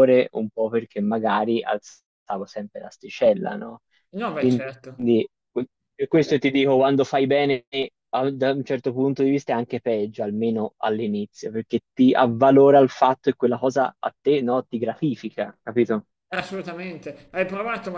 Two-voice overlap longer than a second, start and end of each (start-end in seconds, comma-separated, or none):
none